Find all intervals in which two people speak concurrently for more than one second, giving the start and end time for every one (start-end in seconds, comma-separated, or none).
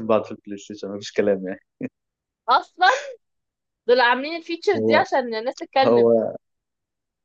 none